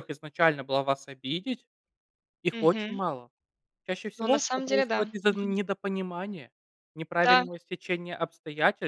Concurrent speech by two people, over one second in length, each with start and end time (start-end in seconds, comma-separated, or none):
4.2-5.6